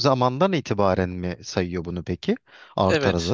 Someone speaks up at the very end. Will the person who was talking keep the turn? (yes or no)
no